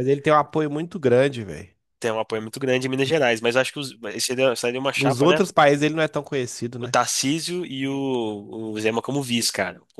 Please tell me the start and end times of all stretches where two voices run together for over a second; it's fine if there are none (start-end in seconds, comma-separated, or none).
none